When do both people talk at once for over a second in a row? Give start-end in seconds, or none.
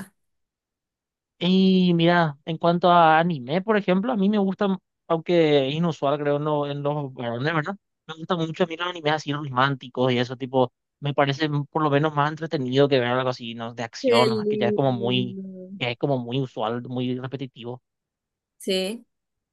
14.0-15.4